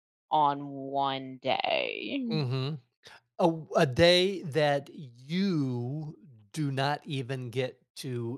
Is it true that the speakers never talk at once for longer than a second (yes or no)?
yes